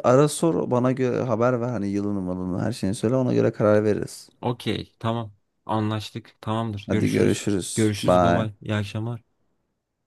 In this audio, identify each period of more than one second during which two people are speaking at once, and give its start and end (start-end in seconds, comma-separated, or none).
6.9-8.5